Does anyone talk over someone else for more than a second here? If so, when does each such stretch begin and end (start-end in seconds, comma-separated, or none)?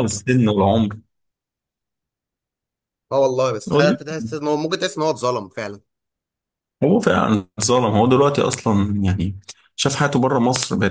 none